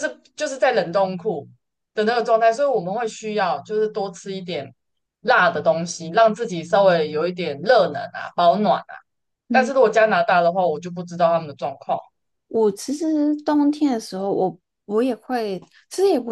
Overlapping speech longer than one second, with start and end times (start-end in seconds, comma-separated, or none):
none